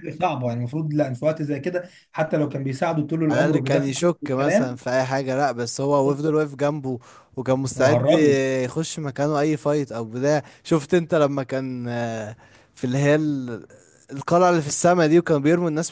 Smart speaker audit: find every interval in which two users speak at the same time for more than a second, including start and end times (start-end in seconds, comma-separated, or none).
3.3-4.8